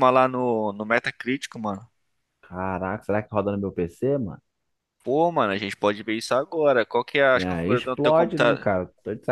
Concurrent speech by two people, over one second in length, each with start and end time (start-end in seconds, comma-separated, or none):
7.3-8.7